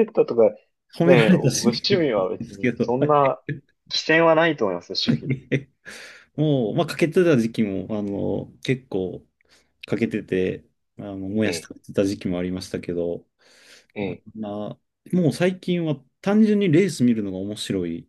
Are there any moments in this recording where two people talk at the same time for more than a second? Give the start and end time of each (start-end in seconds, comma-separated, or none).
1.0-3.1